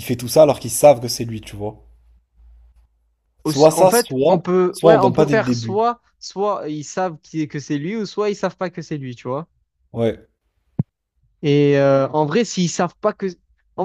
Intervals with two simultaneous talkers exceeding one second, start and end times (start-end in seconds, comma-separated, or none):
3.4-5.8